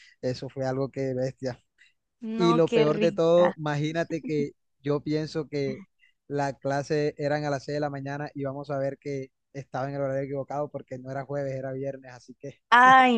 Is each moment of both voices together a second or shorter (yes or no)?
no